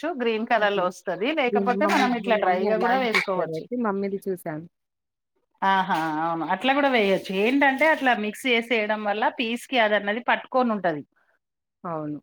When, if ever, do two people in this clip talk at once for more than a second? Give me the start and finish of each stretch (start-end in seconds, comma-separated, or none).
1.5-3.6